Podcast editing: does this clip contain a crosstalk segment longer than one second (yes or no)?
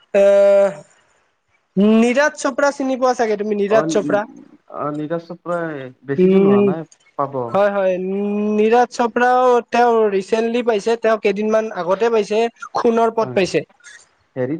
no